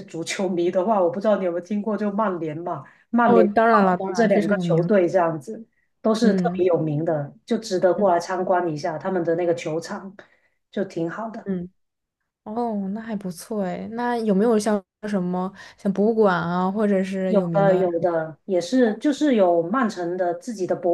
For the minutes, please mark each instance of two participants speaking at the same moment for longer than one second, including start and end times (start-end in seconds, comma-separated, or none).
3.2-4.9